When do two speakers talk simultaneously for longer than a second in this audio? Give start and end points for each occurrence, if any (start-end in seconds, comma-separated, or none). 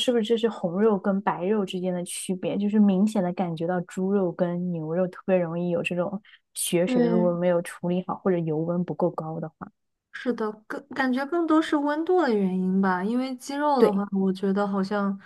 none